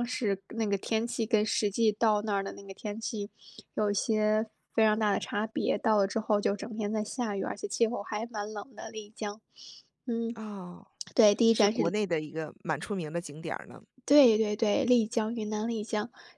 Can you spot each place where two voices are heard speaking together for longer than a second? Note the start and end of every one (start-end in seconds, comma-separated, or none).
none